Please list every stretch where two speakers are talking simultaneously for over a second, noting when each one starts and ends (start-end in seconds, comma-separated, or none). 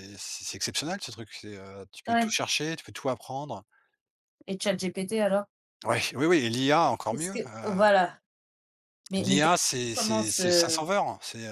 9.2-10.8